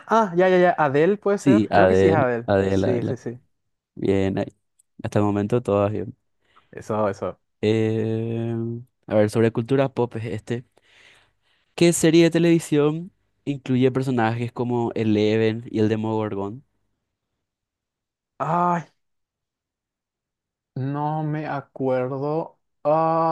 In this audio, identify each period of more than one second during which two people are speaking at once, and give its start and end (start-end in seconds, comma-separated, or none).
1.4-3.2